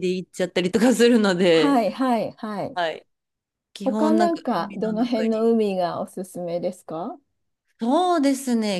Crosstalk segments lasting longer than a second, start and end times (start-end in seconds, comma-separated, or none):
3.8-5.5